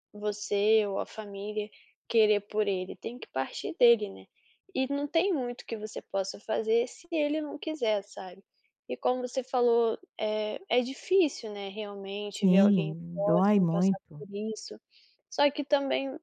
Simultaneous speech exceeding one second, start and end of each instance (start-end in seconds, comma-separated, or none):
12.3-14.2